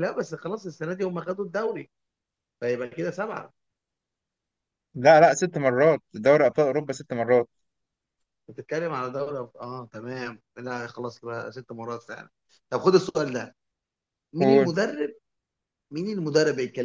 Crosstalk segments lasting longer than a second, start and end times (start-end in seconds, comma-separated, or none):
none